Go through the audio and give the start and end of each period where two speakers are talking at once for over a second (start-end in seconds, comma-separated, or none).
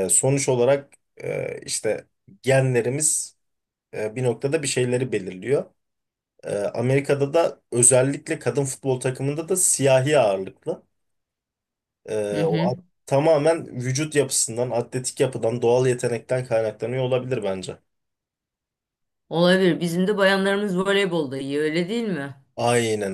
none